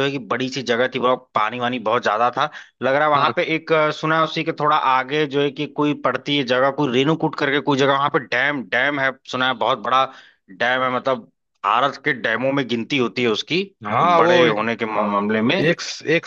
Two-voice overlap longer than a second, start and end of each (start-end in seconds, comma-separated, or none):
none